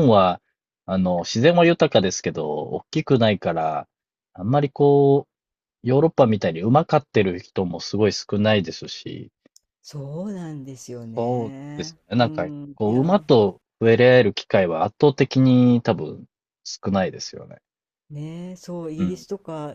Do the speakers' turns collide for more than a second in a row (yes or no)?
yes